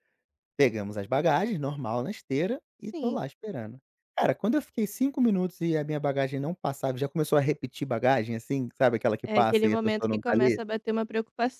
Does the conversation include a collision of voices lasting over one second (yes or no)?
yes